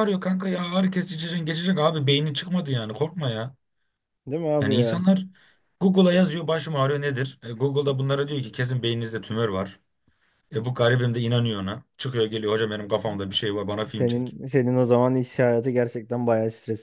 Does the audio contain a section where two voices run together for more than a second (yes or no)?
no